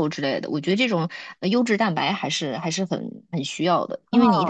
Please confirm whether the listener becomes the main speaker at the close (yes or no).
no